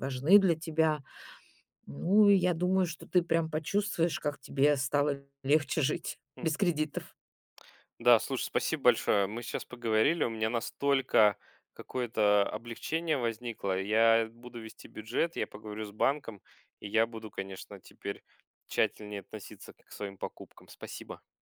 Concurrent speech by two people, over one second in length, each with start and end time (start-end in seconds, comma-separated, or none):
none